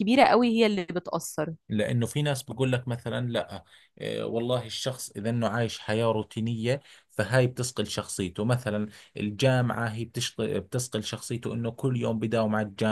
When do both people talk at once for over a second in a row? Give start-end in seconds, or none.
none